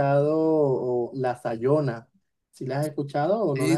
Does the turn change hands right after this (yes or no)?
yes